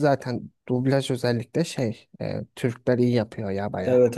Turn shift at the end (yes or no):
yes